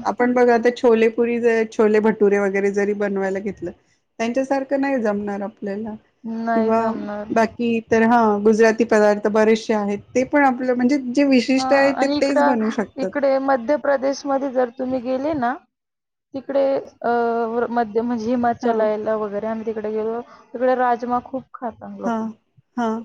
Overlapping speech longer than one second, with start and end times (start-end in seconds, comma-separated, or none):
none